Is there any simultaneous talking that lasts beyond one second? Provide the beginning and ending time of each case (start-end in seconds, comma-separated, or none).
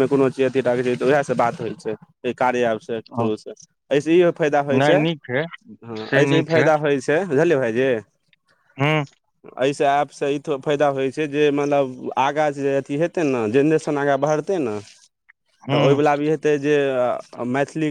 none